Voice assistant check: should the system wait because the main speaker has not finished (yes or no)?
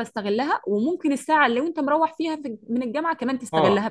no